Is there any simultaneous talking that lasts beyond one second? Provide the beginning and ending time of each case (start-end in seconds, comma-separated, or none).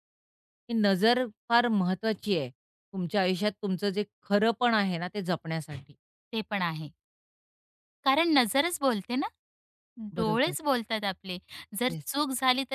none